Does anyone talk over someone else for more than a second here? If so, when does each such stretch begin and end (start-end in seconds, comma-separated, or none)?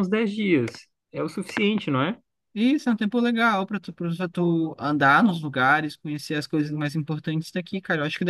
none